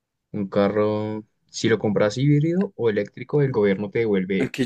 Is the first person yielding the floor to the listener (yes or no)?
yes